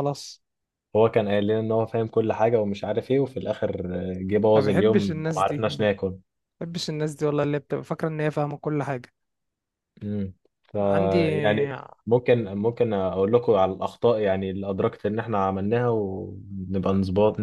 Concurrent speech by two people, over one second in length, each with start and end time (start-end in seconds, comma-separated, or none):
4.5-5.9